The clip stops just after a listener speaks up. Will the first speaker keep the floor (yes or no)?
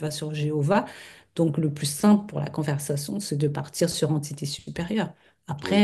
no